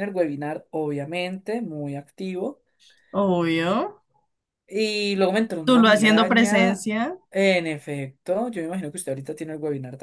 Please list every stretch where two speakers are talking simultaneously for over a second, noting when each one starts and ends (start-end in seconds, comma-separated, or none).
5.6-6.8